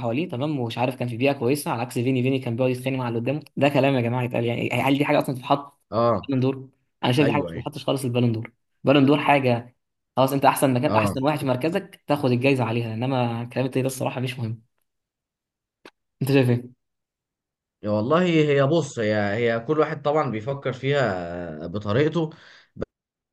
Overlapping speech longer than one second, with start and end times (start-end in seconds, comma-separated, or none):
none